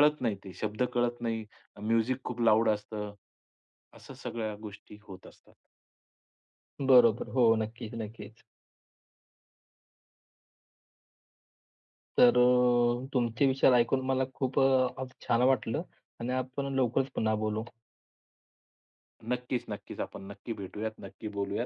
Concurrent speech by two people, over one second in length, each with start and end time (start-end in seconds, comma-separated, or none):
none